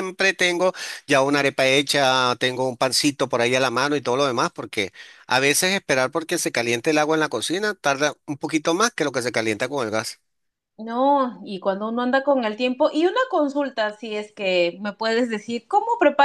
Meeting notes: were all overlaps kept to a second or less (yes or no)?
yes